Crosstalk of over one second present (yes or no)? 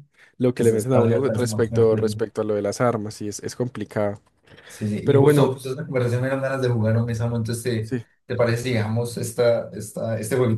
yes